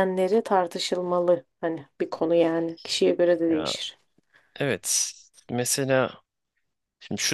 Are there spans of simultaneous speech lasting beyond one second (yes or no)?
no